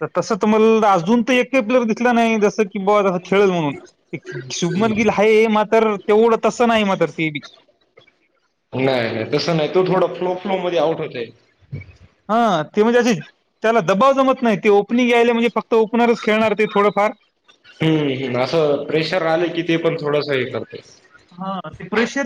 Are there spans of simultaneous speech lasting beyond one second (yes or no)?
no